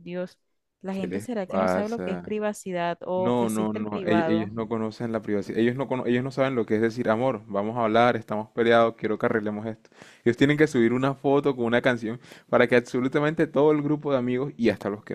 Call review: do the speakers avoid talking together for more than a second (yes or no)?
no